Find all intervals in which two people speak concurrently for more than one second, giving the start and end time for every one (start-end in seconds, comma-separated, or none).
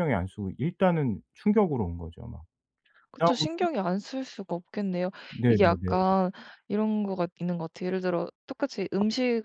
none